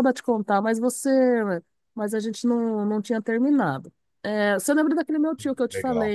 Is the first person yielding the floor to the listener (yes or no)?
no